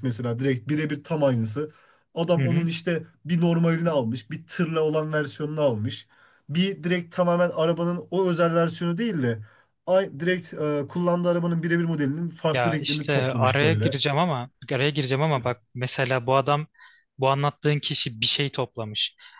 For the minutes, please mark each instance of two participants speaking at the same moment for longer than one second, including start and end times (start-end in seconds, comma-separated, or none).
12.5-14.0